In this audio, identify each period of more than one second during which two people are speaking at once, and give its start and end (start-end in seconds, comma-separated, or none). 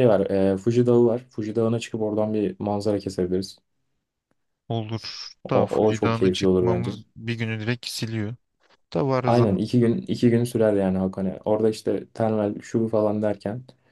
5.4-7.0